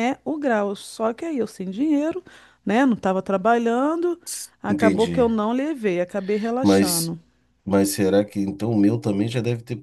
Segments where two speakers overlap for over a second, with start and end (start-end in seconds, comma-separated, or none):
none